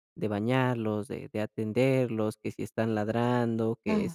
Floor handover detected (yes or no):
no